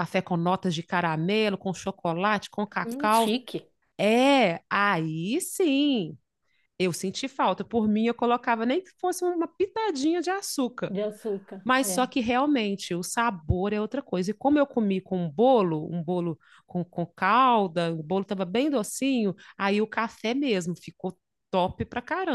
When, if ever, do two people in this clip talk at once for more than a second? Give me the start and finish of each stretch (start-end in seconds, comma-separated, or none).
none